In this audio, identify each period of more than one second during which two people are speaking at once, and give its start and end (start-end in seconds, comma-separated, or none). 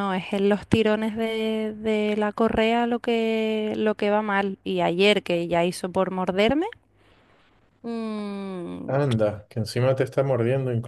none